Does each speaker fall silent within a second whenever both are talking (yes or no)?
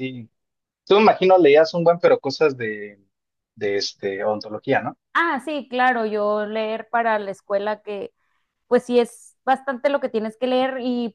yes